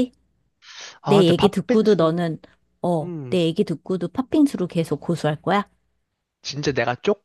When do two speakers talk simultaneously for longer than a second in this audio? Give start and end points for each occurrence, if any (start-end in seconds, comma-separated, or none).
1.0-2.2